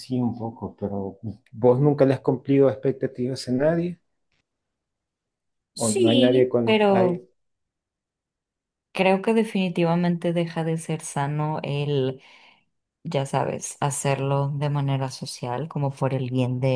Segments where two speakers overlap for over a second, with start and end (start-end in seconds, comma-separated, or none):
5.8-7.2